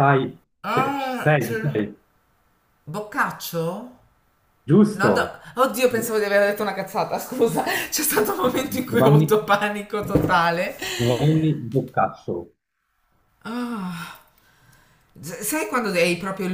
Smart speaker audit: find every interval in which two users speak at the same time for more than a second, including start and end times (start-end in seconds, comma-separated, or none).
0.6-1.9